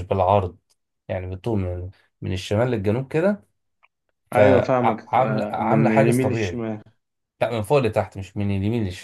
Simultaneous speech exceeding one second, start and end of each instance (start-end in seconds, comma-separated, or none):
4.3-6.6